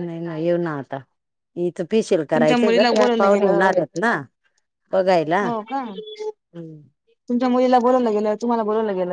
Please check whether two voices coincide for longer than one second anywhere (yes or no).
yes